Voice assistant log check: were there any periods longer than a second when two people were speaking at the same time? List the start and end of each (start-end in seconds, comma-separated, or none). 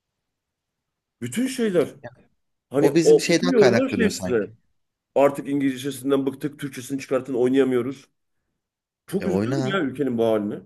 2.8-4.5